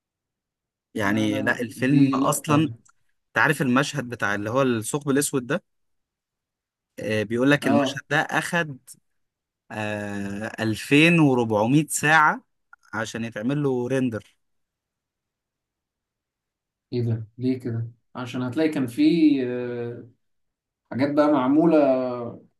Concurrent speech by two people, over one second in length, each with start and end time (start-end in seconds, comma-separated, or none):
1.0-2.7